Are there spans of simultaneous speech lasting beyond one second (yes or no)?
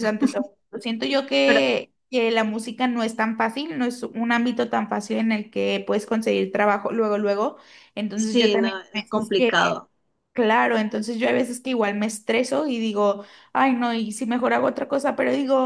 yes